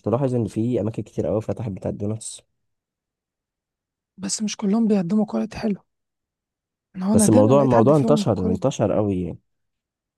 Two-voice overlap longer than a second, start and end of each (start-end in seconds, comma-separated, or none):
7.1-8.7